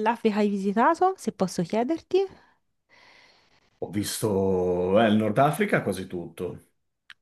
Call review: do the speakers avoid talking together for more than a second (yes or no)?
yes